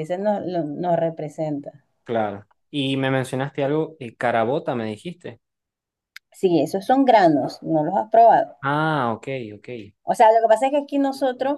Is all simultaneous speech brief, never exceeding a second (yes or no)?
yes